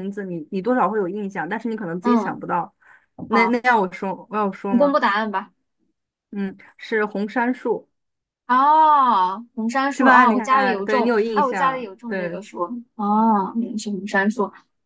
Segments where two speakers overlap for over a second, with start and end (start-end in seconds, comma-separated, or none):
9.9-12.4